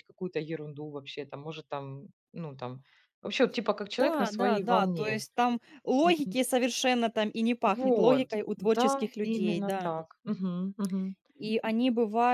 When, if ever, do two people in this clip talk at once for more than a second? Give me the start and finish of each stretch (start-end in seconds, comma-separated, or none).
4.0-5.2, 7.7-9.9